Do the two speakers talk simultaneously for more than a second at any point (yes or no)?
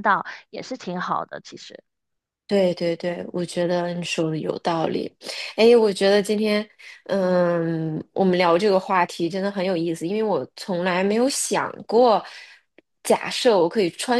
no